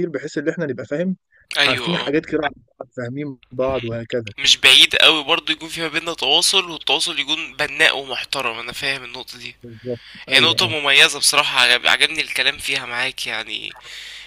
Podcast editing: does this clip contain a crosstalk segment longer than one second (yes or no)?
no